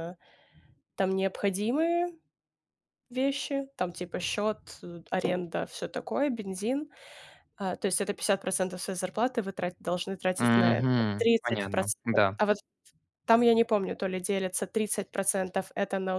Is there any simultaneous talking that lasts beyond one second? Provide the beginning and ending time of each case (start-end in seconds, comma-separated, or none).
10.4-12.4